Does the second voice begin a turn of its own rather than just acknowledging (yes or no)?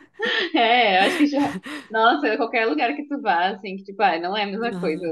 no